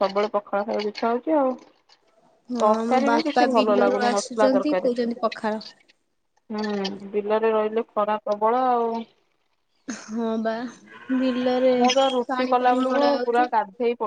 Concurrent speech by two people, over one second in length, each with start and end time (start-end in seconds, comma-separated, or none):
2.6-4.9